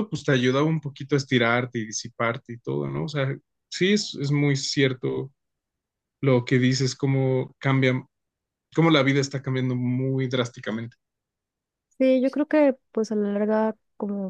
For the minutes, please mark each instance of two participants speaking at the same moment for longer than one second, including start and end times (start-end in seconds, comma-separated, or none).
none